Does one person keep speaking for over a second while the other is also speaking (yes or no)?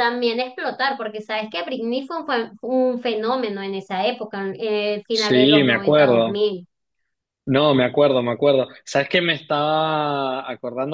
yes